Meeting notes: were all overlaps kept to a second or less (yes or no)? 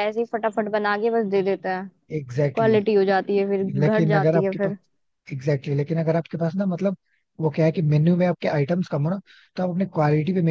no